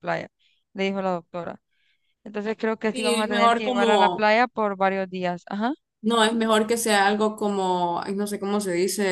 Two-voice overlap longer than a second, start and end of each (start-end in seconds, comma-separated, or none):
2.9-4.3